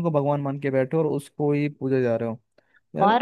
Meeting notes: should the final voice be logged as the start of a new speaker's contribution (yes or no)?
no